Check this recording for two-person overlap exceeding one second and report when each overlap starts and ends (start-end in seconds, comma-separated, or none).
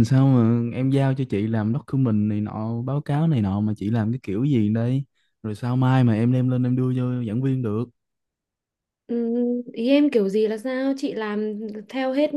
none